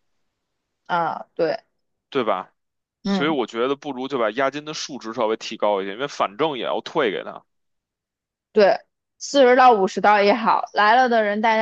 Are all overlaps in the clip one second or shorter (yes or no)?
yes